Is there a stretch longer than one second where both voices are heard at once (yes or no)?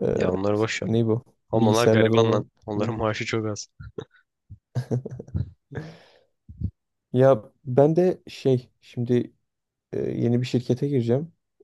yes